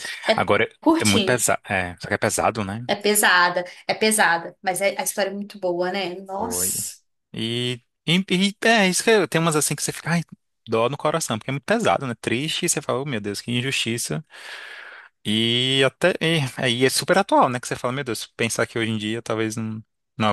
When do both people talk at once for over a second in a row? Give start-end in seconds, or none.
none